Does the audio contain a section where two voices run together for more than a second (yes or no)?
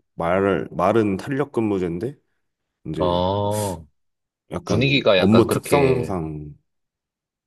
yes